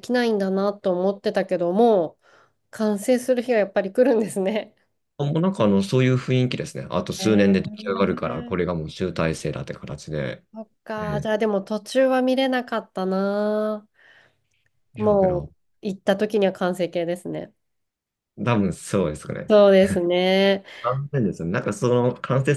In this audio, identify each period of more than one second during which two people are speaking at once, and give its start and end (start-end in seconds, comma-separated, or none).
7.2-8.6